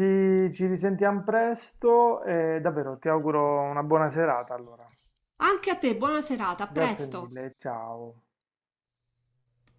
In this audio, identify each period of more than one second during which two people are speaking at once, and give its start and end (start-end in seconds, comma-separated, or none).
none